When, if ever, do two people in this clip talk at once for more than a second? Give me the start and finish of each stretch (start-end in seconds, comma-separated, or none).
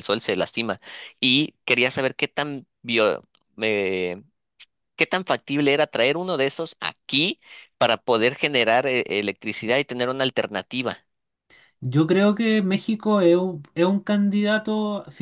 none